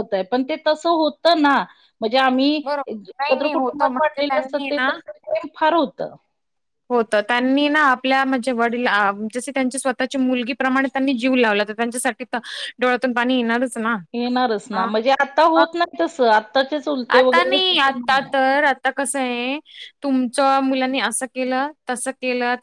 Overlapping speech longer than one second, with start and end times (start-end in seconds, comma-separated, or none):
2.6-4.7